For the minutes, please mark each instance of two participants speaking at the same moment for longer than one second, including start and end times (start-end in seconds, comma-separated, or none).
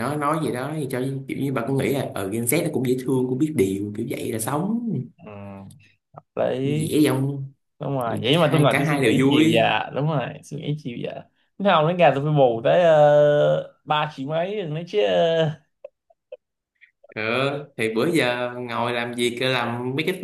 8.3-9.6